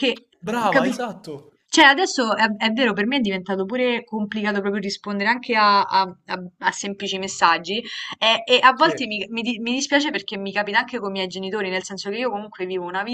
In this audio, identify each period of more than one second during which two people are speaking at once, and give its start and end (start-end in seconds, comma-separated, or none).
none